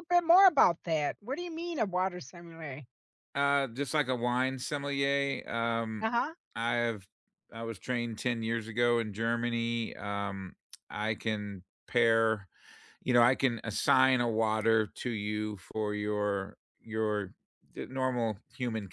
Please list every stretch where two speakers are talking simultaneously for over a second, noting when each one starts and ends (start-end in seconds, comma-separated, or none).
none